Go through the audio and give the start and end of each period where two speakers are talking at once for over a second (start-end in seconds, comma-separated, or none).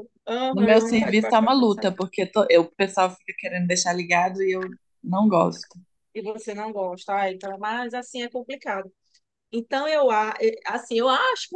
0.5-2.0